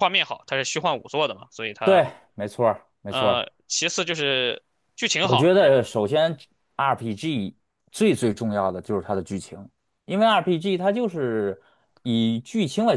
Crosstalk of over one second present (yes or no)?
no